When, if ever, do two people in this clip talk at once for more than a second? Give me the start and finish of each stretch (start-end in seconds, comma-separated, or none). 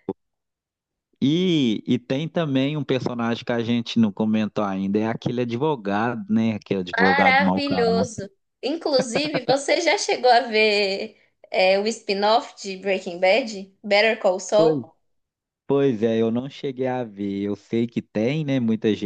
7.0-8.3